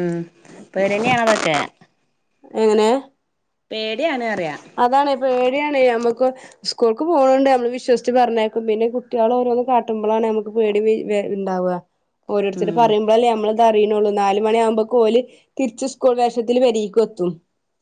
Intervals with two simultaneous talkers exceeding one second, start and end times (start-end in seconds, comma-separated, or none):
none